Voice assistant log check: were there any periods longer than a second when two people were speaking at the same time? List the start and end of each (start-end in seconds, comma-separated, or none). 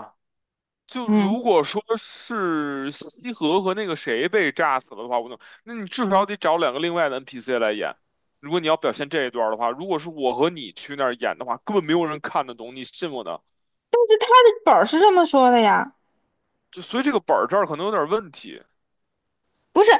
none